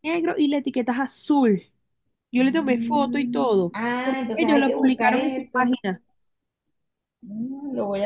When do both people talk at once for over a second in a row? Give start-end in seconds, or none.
2.3-5.8